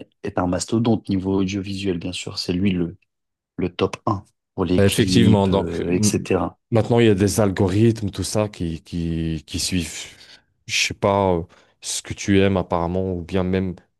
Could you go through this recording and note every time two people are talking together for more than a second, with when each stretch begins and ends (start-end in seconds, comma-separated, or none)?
4.8-6.3